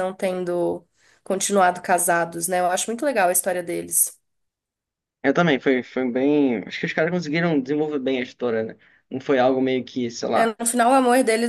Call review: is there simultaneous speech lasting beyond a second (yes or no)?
no